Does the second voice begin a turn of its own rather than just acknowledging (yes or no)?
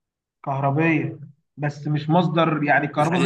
no